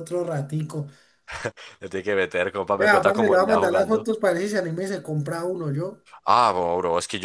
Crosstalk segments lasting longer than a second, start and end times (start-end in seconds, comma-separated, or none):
2.8-4.1